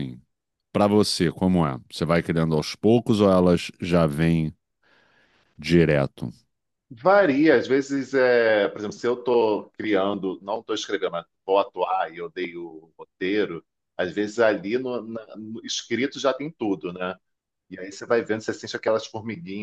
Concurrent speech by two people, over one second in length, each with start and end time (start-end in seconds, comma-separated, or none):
none